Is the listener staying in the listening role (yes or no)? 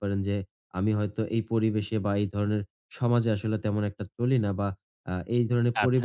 yes